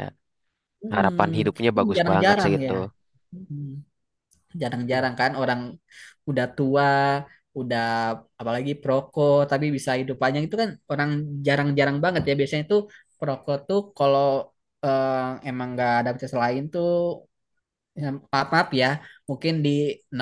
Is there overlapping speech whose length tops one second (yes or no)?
yes